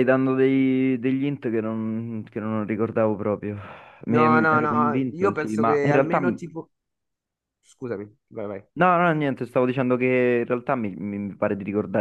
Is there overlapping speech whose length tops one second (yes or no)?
yes